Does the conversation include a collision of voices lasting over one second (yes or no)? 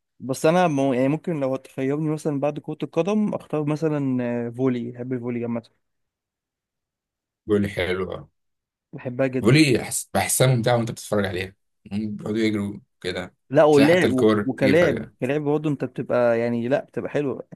yes